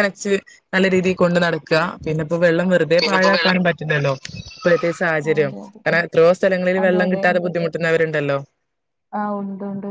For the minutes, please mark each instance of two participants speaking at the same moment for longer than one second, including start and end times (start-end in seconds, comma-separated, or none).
none